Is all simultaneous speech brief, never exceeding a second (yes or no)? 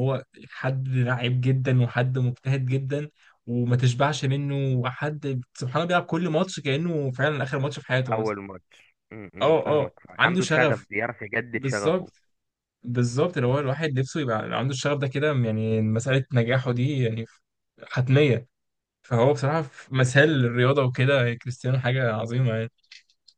no